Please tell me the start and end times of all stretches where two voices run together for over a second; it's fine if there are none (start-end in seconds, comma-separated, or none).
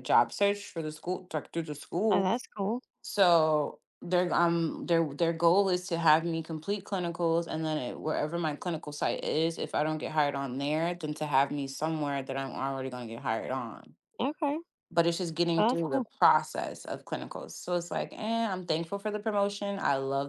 none